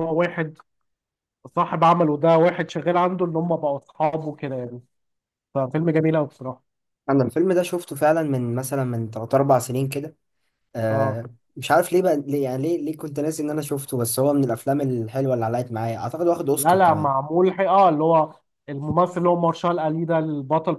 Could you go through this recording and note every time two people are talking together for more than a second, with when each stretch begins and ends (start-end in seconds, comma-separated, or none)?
none